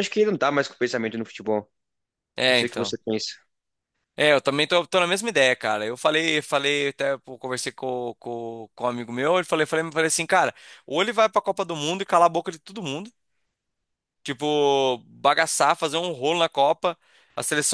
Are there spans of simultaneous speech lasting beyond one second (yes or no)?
no